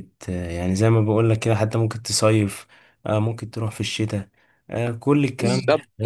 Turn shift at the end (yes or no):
yes